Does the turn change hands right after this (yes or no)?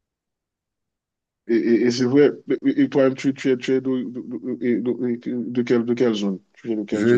yes